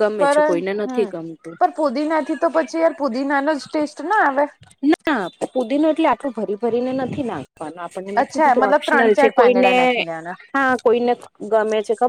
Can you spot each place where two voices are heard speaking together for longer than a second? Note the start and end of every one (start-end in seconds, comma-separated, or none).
8.2-9.7